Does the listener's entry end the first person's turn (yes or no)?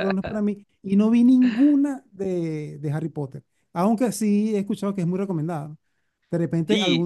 no